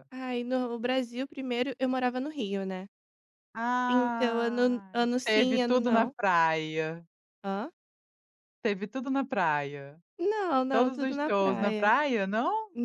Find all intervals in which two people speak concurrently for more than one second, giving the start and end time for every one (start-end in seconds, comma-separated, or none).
3.9-6.1, 10.7-11.9